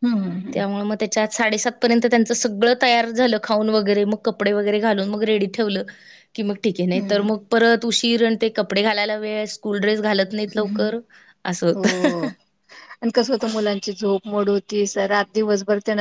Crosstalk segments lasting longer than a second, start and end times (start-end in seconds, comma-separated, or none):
none